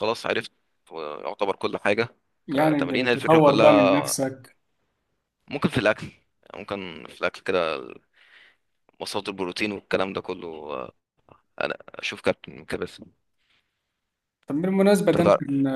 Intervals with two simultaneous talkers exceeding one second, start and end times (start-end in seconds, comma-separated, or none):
2.5-4.1